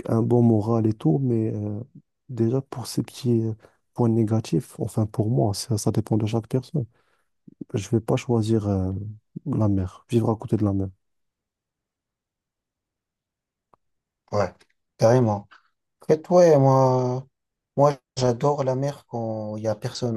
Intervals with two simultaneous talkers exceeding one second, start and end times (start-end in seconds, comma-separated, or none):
none